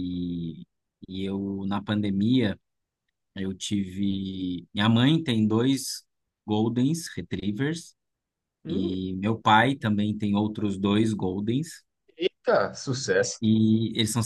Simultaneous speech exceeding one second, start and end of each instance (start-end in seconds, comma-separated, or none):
none